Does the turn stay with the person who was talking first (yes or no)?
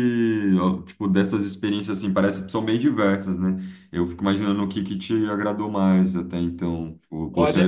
yes